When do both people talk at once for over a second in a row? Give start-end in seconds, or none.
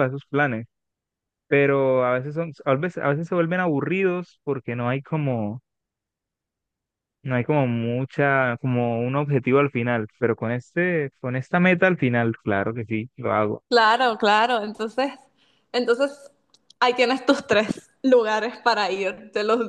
none